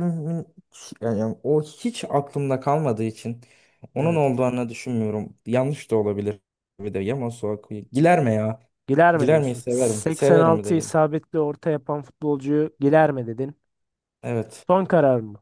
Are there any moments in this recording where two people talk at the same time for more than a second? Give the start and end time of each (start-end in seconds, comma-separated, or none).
9.1-10.9